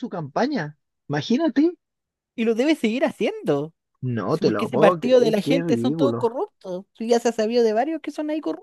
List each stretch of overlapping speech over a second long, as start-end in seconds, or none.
4.3-6.3